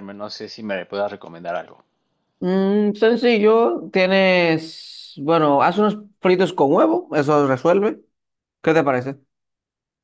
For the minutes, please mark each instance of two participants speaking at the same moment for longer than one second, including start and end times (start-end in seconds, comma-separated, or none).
none